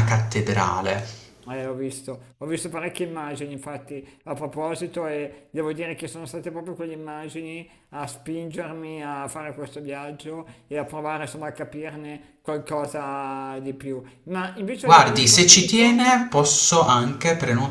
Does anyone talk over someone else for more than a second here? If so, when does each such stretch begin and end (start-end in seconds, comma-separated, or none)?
14.8-16.1